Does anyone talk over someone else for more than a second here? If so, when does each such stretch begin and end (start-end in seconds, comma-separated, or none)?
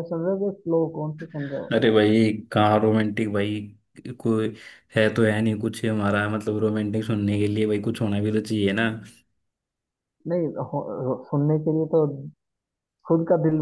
none